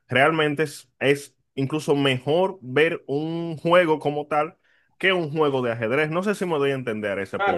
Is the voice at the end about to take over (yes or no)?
yes